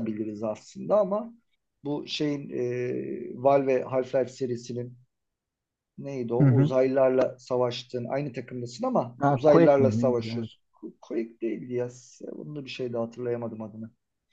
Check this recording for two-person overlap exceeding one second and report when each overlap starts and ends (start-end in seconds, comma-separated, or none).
9.2-10.5